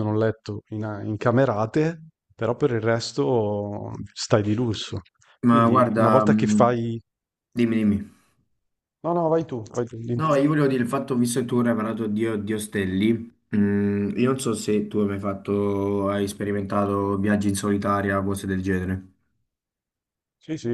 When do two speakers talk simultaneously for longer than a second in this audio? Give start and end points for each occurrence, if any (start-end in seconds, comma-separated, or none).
5.5-6.8